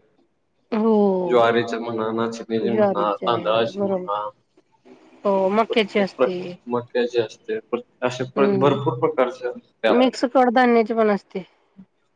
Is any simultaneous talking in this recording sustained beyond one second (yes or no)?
yes